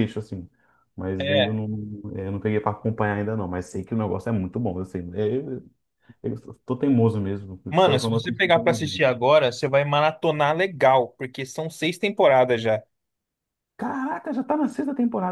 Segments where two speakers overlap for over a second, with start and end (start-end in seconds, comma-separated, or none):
7.7-9.0